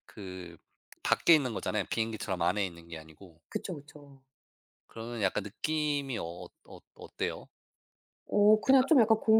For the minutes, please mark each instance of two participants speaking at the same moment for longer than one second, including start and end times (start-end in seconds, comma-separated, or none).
none